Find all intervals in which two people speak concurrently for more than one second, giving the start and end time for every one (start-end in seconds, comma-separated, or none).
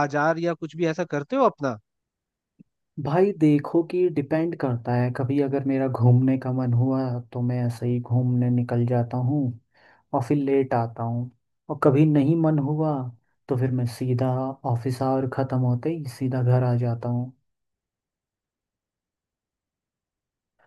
none